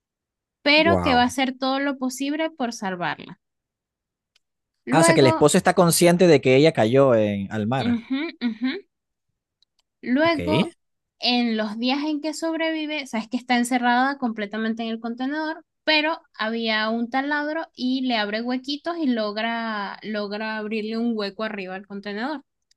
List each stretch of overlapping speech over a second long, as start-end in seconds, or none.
none